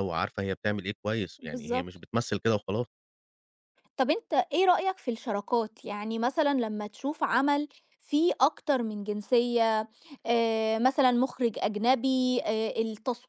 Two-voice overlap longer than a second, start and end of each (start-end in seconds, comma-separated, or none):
none